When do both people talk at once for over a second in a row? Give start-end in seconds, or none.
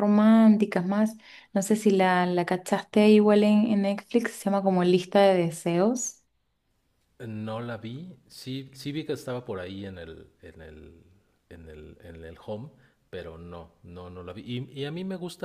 none